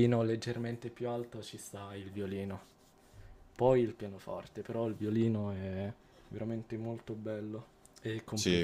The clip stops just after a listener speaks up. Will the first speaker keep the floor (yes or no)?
no